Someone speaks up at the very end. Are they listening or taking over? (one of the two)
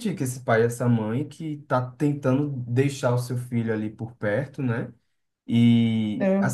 listening